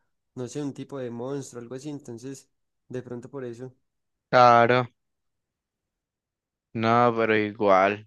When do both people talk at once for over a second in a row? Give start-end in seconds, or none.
none